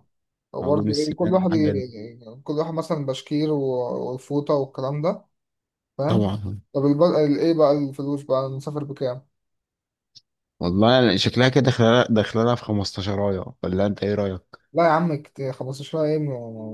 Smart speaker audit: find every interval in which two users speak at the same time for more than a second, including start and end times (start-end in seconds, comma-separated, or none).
0.6-1.8